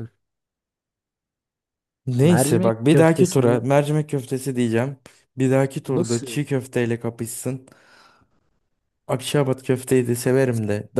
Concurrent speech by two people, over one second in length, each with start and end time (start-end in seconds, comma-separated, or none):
2.2-3.6